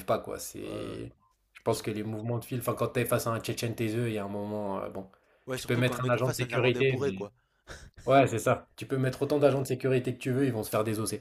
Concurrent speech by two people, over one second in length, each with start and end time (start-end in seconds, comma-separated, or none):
5.5-7.3